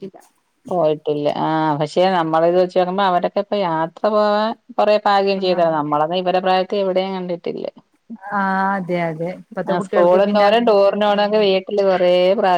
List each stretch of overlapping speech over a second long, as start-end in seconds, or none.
9.7-11.4